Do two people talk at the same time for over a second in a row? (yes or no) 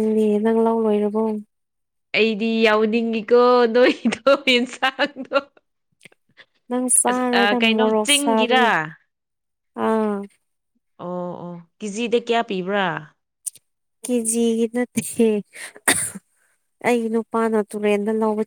yes